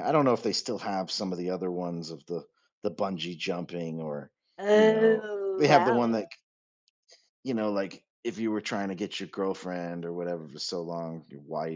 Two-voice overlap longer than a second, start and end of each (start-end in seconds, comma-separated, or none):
4.7-6.2